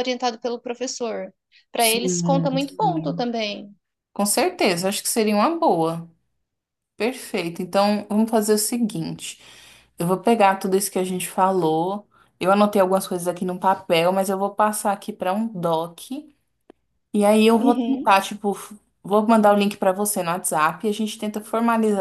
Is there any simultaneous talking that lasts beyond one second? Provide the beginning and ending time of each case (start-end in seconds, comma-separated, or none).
1.8-3.3